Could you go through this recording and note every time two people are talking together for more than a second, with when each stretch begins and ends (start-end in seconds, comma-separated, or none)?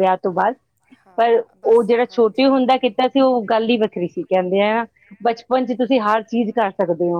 1.2-2.9